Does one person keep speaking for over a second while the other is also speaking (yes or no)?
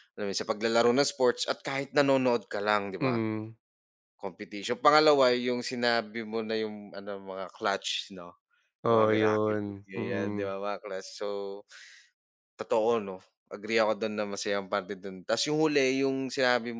yes